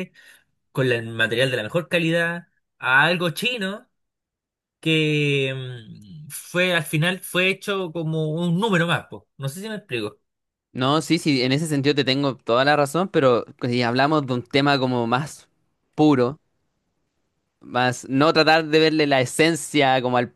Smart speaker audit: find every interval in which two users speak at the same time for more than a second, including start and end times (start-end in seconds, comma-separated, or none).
none